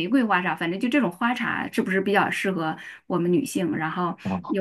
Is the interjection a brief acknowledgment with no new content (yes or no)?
yes